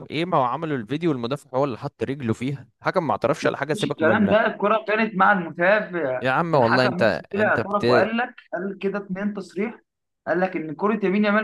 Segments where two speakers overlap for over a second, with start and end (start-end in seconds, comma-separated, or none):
6.2-8.1